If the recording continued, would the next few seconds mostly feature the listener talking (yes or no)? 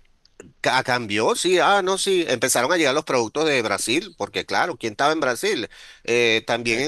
no